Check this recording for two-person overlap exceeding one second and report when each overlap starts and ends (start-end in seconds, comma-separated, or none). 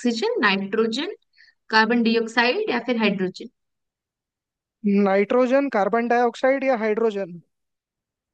none